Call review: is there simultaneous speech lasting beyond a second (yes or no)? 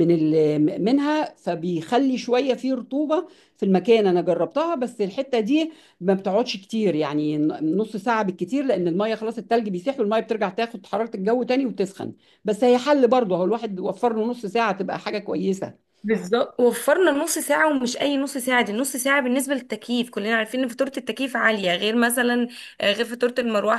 no